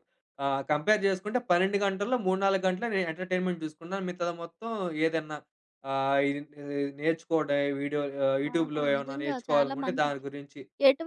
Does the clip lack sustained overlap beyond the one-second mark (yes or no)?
no